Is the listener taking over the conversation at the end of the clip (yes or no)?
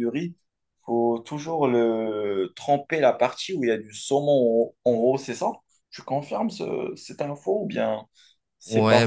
yes